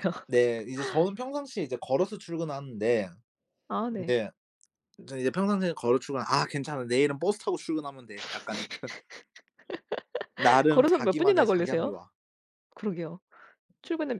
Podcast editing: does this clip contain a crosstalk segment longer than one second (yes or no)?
yes